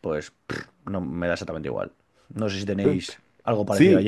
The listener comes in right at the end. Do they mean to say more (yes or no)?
yes